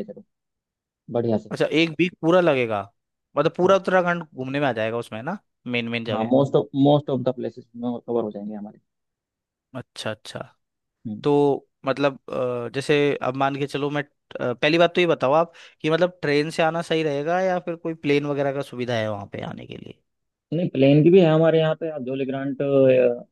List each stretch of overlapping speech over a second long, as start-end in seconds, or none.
none